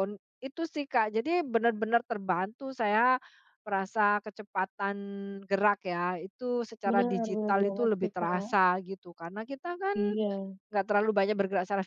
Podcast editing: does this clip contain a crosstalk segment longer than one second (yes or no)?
yes